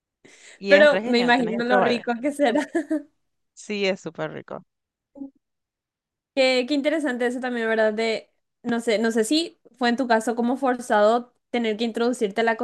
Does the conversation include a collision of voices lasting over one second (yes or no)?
yes